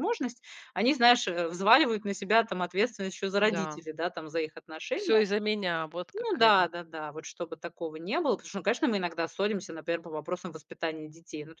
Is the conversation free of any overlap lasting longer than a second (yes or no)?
yes